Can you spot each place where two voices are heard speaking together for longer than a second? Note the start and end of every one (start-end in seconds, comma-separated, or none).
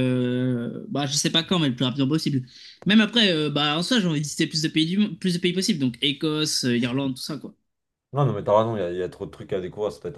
none